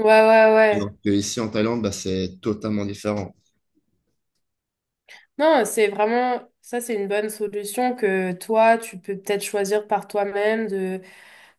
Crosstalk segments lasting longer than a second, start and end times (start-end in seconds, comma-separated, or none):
none